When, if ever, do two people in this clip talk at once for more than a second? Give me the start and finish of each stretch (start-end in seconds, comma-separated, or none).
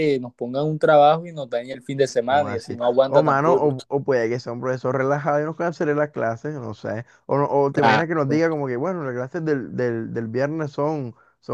2.3-3.7